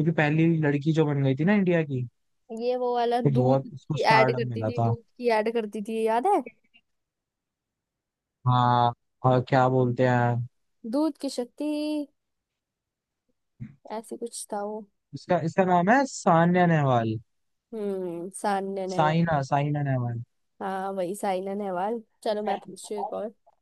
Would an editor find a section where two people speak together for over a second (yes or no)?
yes